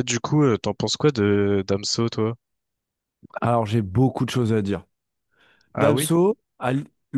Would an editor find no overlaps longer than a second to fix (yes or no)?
yes